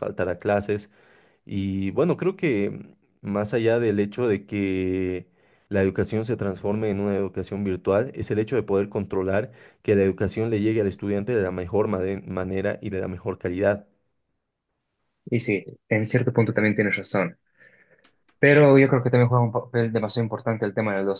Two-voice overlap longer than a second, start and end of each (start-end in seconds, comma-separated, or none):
none